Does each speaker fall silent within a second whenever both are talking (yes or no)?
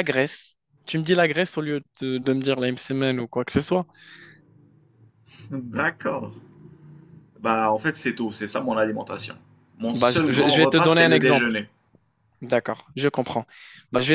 no